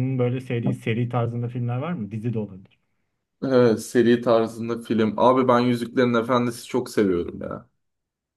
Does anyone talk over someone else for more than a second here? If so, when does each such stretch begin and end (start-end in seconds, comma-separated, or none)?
none